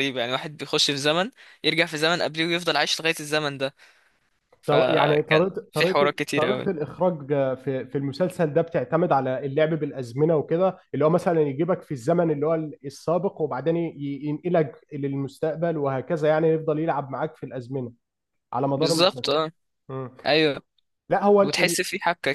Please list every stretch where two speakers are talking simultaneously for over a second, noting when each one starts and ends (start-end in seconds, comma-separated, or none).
4.7-6.7